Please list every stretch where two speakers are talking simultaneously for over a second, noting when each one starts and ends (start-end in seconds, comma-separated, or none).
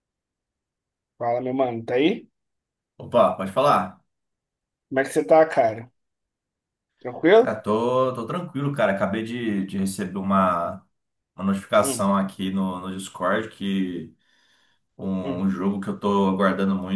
none